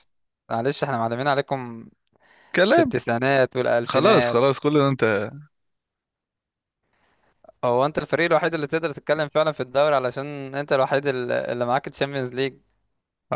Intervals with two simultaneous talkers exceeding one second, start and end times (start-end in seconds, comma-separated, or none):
none